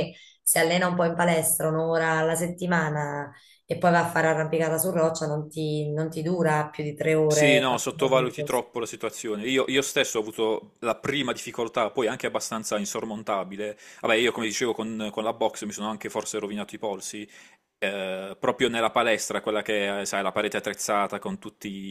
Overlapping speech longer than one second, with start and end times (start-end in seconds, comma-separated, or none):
7.3-8.6